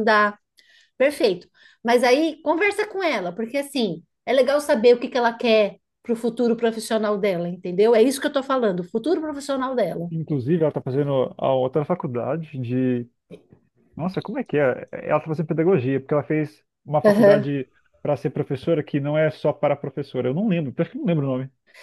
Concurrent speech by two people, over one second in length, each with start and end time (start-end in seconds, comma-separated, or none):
none